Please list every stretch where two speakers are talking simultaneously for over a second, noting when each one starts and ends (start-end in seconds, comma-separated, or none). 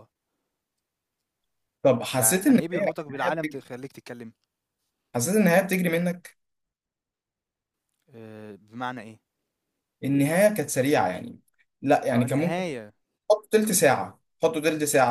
2.1-3.6